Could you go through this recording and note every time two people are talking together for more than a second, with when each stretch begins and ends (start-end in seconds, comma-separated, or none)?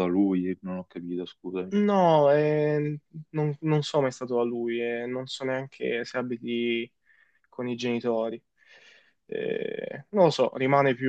none